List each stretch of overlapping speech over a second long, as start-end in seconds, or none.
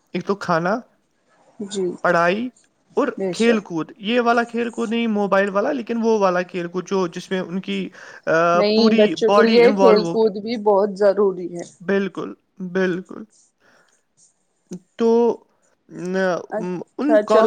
8.6-10.3